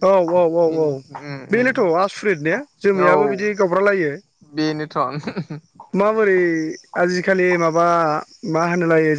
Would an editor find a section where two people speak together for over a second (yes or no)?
no